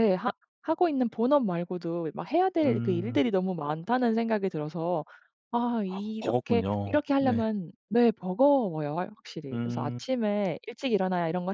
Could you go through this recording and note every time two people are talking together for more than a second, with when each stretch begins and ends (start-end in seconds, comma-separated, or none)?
5.9-7.5